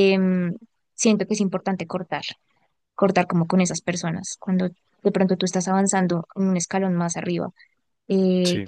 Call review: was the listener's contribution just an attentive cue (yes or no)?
yes